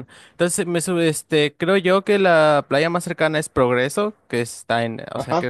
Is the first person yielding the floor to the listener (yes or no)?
no